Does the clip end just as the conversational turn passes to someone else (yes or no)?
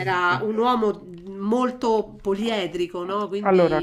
yes